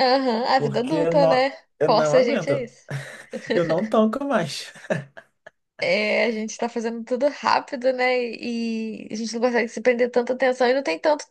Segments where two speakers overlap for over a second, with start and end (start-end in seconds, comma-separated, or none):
0.6-2.7